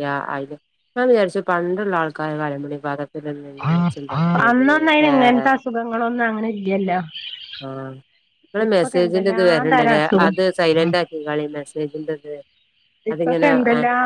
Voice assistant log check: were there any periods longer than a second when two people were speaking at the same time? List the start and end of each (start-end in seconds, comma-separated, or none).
8.7-10.3